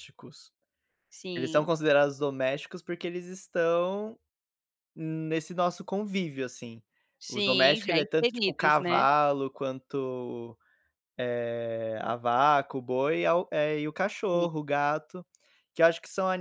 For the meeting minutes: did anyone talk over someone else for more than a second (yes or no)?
yes